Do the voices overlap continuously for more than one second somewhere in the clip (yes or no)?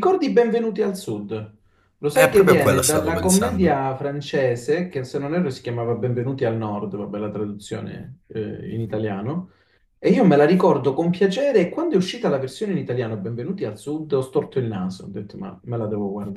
yes